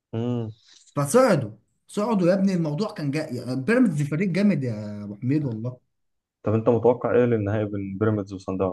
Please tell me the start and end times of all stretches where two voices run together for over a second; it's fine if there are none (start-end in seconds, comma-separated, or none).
none